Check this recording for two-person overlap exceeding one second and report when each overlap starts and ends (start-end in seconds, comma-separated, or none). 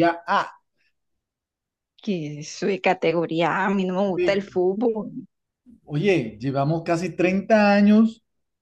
none